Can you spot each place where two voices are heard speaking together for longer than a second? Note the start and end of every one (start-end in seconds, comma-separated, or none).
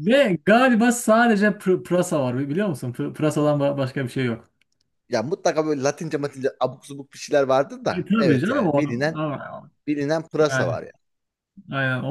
7.9-9.2